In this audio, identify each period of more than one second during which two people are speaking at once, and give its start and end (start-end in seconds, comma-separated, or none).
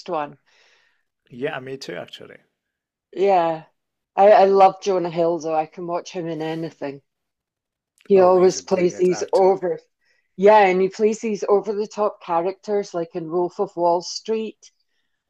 8.2-9.6